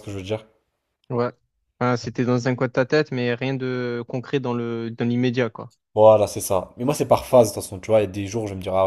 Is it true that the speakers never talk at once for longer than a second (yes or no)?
yes